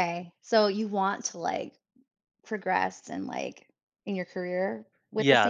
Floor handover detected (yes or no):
yes